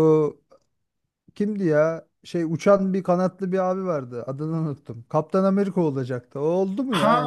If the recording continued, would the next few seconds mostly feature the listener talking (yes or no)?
yes